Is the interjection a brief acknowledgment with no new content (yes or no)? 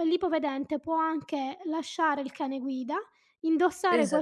yes